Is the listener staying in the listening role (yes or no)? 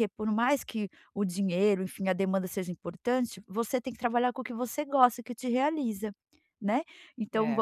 no